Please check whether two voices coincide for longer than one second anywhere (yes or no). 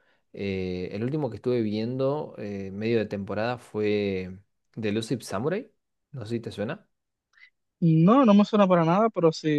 no